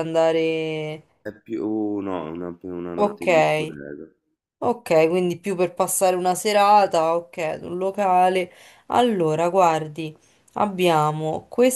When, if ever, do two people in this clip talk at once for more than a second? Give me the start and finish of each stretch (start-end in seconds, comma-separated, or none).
none